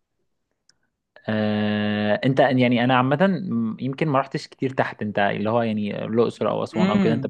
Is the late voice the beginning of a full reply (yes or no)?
yes